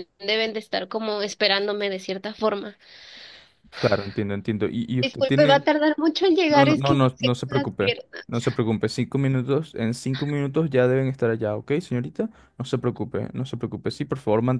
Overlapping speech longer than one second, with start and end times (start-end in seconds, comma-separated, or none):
6.5-8.1